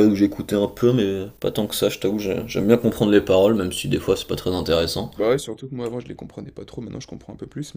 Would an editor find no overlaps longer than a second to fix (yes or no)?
yes